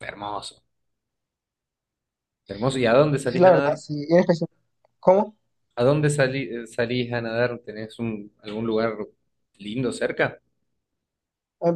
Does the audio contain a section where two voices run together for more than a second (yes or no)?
no